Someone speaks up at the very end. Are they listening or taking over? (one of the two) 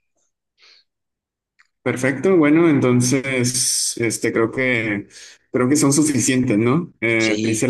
listening